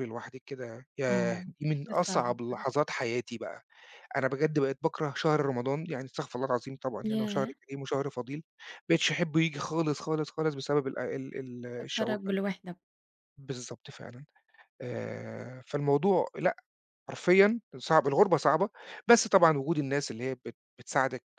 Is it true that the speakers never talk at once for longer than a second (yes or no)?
no